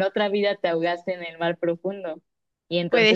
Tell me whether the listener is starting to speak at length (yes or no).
no